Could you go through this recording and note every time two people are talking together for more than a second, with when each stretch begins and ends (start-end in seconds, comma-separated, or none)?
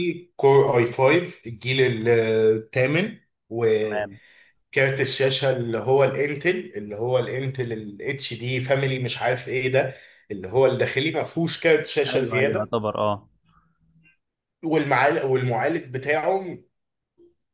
none